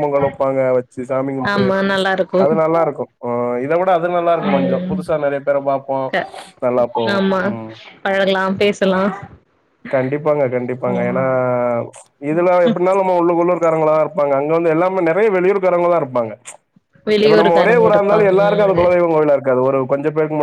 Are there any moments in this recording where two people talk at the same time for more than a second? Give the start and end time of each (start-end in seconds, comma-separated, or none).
17.2-18.8